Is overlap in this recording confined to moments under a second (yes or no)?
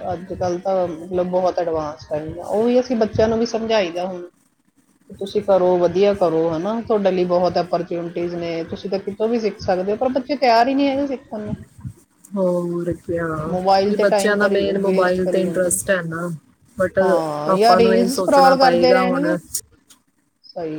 no